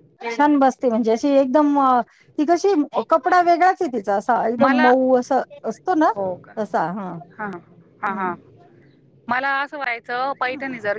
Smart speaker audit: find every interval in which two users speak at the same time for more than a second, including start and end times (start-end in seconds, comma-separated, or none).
none